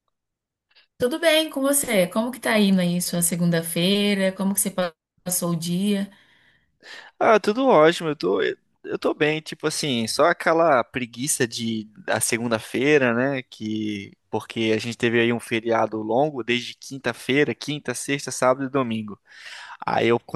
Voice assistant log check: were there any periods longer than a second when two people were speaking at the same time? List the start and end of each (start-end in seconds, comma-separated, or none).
none